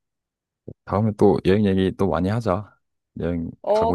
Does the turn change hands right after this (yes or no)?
yes